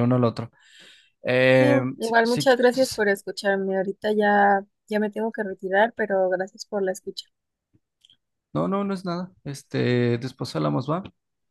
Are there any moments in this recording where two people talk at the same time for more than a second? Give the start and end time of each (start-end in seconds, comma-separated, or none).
1.6-3.0